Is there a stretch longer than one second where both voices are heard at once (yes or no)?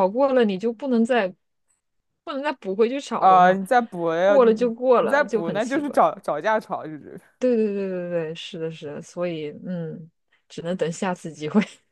yes